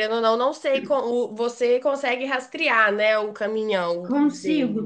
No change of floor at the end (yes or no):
no